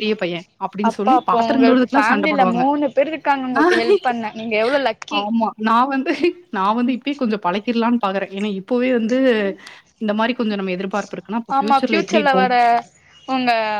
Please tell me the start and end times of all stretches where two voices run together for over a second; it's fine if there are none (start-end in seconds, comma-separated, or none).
0.9-2.6